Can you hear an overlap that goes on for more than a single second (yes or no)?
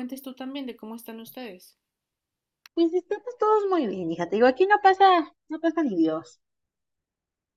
no